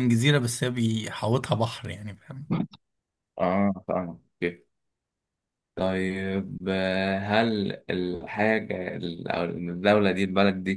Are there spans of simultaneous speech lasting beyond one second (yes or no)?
no